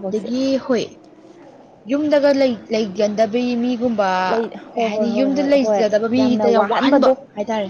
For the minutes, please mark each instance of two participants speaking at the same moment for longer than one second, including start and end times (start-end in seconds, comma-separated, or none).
4.7-7.2